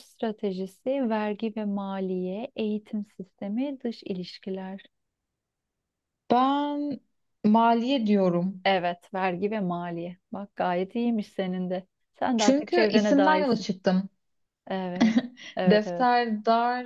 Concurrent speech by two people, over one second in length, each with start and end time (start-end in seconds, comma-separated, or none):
12.4-13.7